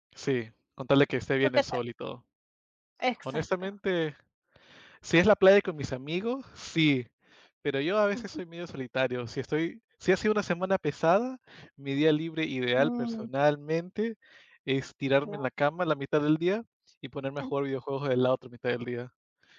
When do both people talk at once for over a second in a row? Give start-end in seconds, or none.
none